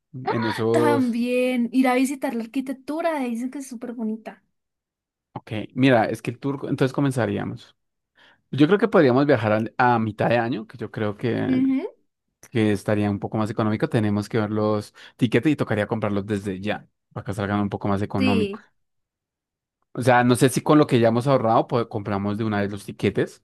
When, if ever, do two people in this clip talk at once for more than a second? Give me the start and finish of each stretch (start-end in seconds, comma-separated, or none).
none